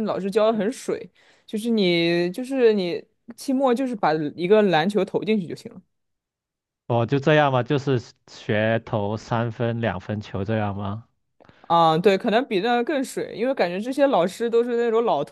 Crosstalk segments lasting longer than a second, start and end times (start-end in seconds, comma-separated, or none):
none